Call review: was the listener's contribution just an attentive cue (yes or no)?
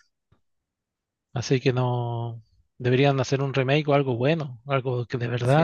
no